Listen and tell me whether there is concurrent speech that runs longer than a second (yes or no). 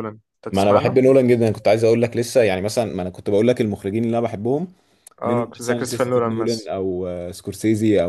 yes